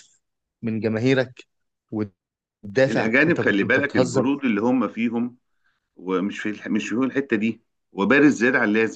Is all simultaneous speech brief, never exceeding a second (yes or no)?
no